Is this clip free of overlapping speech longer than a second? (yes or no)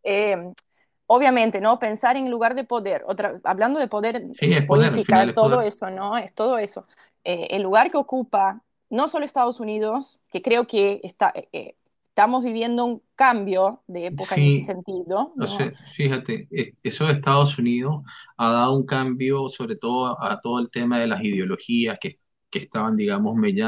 no